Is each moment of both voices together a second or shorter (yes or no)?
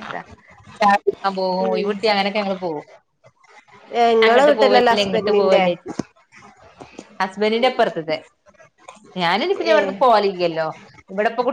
no